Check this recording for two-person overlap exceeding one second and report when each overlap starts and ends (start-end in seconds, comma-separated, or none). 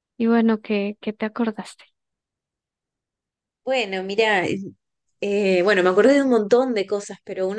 none